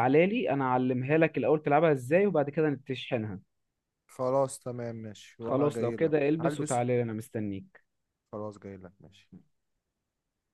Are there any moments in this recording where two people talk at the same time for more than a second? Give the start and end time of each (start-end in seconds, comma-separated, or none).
5.4-6.8